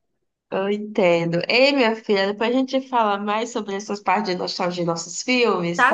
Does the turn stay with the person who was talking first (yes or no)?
no